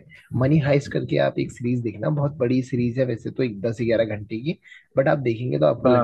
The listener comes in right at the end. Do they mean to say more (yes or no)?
no